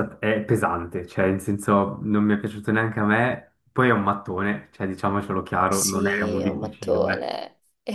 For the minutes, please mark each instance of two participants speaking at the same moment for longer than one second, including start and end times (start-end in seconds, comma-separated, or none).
5.7-7.3